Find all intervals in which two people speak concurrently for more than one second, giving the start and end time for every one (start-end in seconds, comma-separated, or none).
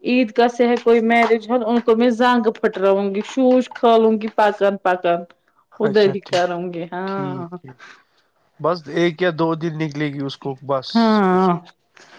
5.9-7.5